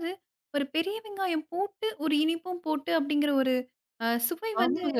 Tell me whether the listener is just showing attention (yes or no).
no